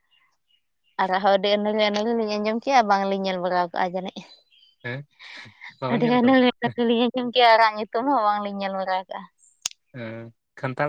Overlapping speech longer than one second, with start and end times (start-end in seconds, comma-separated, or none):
none